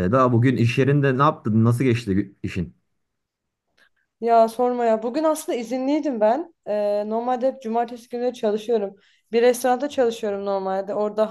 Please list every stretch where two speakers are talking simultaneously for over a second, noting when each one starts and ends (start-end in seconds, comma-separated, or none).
none